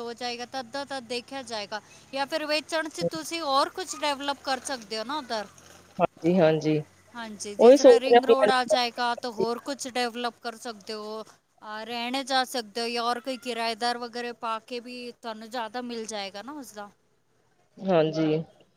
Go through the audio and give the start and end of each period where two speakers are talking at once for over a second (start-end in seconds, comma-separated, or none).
7.8-9.6